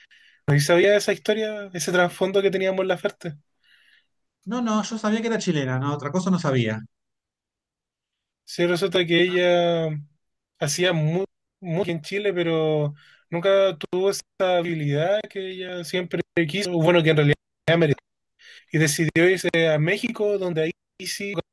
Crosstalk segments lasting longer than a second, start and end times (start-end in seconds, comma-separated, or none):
none